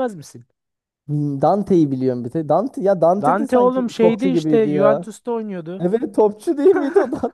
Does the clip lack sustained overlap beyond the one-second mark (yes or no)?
no